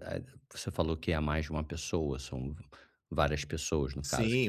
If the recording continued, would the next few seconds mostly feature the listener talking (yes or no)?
yes